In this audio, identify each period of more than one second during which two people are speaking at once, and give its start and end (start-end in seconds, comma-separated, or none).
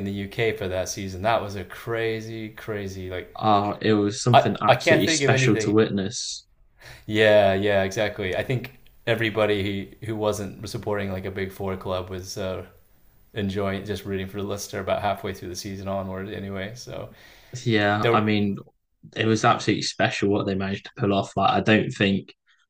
4.3-5.8